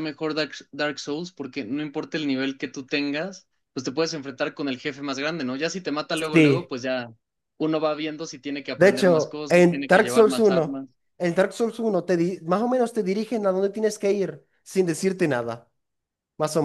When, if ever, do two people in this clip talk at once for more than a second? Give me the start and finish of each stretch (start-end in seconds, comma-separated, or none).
8.8-10.8